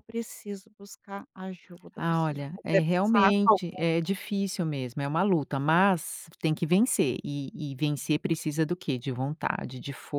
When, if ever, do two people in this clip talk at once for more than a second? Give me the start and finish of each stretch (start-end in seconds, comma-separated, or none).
1.9-3.9